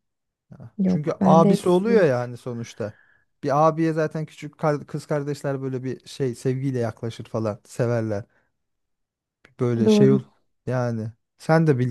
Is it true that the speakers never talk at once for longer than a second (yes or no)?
no